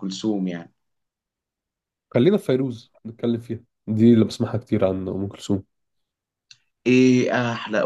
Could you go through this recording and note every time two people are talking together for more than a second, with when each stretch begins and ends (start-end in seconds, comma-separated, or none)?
none